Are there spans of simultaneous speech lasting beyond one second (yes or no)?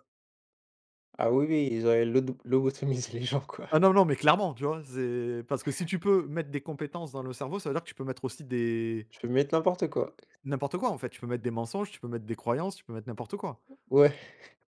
no